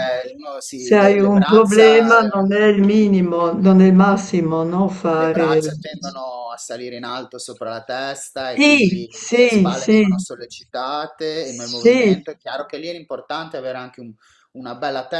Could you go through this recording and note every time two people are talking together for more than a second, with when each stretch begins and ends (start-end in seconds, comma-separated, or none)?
0.7-2.5, 8.5-10.0